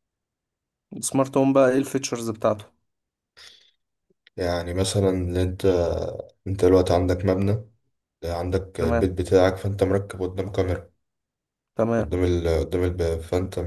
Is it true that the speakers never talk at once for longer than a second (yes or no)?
yes